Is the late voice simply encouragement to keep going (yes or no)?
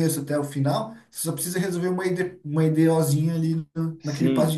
no